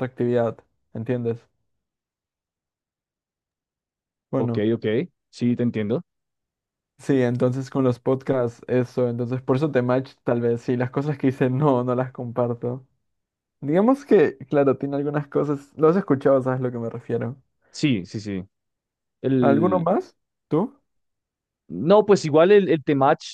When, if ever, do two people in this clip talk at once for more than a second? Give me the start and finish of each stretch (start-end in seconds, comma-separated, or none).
none